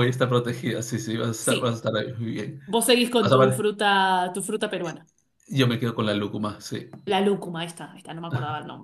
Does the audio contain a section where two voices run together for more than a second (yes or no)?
no